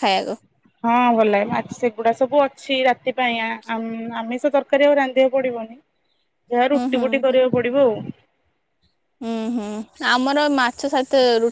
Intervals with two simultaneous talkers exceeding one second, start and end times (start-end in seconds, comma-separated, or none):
none